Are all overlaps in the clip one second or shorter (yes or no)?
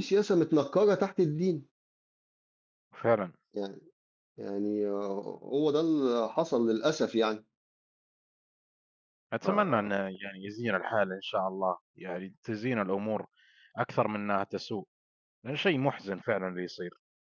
yes